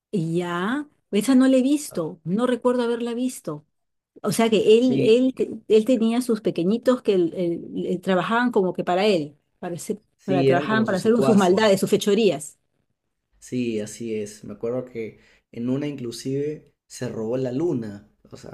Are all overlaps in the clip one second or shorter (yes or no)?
no